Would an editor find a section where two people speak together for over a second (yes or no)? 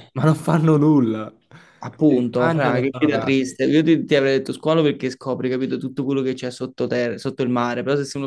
yes